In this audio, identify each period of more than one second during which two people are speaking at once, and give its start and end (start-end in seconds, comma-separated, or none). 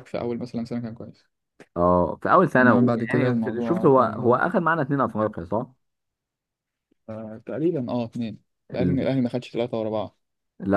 2.6-4.4